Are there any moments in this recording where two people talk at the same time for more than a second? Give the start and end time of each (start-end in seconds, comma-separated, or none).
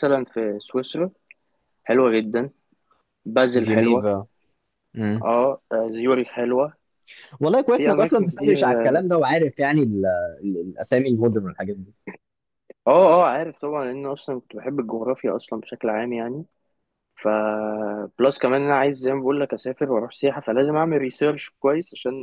7.7-9.1